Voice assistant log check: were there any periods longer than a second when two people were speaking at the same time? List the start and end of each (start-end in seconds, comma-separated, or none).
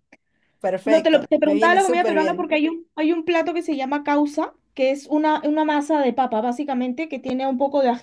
0.8-2.5